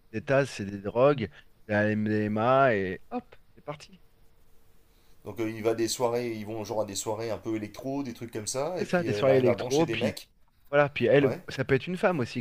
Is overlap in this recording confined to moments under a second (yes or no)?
no